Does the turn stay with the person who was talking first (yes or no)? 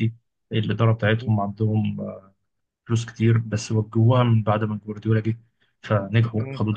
yes